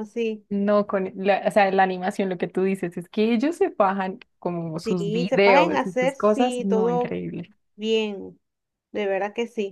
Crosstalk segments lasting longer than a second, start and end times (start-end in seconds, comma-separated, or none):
4.8-7.2